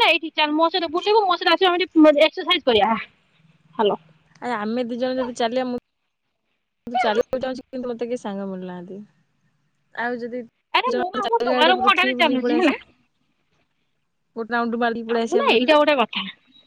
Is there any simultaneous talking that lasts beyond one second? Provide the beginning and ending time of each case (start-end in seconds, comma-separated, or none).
10.9-12.7